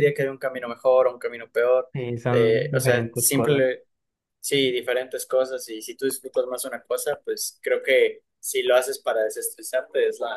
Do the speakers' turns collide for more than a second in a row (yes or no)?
yes